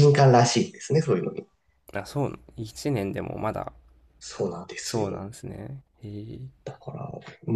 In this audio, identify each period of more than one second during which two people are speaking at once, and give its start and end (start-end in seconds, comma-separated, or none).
none